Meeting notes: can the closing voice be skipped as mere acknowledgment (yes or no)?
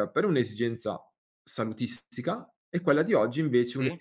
yes